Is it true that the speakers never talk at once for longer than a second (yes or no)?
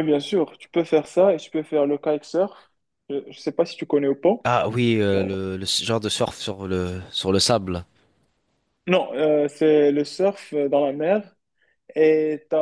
yes